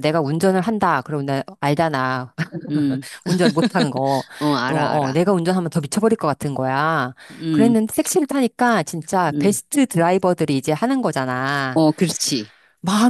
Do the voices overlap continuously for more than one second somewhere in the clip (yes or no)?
no